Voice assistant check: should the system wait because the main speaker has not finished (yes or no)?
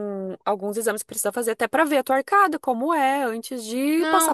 no